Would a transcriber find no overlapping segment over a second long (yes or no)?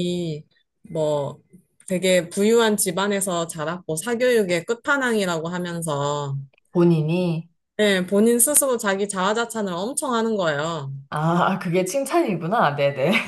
yes